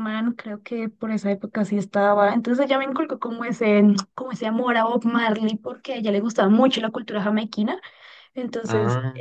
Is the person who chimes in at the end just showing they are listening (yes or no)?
yes